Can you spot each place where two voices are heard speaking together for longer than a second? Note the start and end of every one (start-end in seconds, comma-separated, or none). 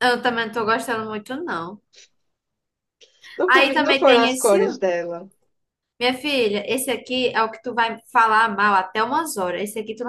3.5-4.8